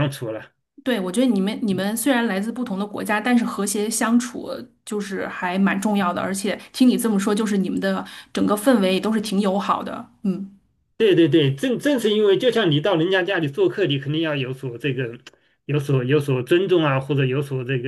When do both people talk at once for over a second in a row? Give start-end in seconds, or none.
none